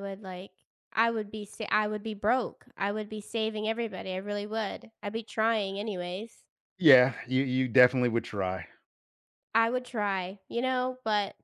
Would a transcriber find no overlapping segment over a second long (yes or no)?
yes